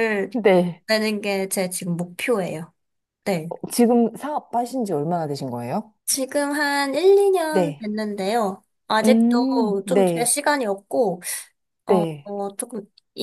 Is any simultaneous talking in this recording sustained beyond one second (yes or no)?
yes